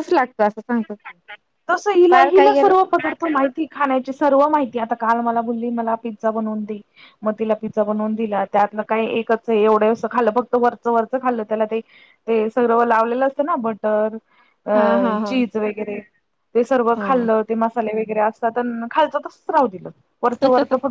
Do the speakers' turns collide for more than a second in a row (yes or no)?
no